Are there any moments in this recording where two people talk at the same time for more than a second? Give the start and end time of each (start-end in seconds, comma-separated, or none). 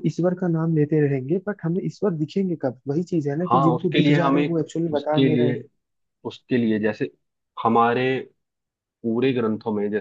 3.5-5.6